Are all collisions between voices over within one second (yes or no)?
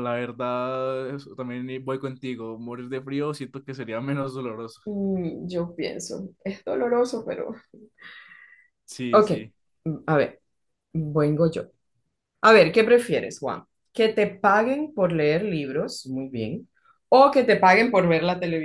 yes